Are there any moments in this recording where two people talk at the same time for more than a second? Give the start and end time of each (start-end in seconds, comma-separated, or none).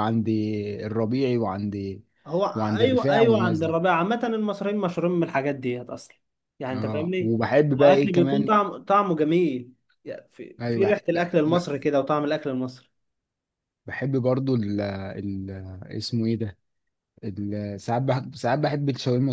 2.5-3.8, 6.7-8.5